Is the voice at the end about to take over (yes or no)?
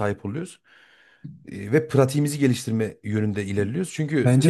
yes